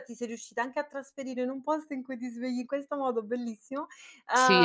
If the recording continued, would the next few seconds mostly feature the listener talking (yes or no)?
yes